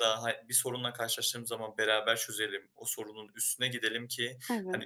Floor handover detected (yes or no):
no